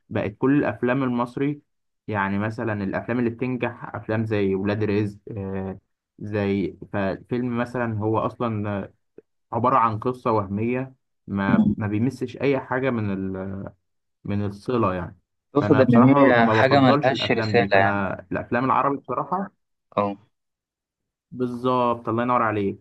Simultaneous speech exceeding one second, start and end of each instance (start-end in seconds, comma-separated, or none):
15.6-18.1